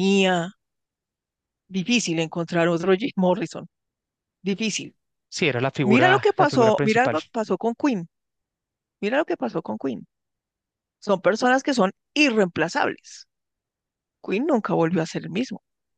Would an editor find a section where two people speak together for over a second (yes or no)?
yes